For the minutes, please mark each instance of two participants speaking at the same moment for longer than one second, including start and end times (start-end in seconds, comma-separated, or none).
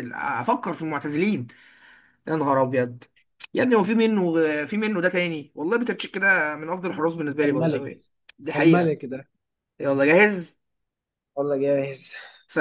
none